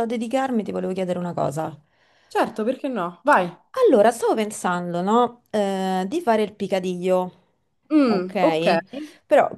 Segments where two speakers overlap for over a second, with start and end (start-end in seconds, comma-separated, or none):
none